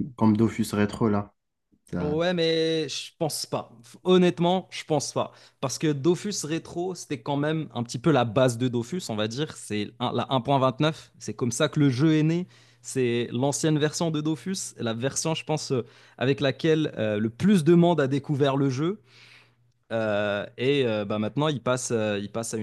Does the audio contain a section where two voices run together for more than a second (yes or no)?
no